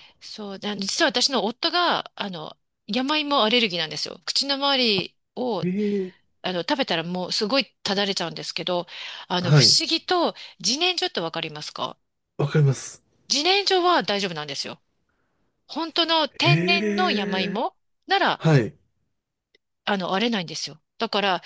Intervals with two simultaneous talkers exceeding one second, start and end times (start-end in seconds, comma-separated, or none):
16.4-17.6